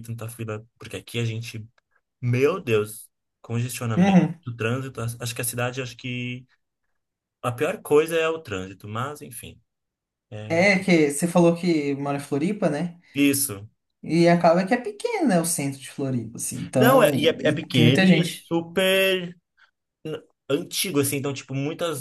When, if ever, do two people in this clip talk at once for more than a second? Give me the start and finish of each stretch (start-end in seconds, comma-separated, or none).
16.8-18.5